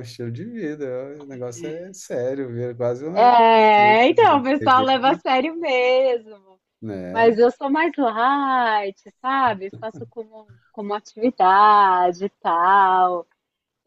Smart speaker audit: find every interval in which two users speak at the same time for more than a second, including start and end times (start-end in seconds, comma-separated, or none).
3.1-5.2